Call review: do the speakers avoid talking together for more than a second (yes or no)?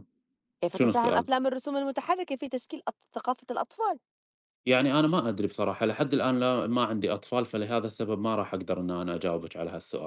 yes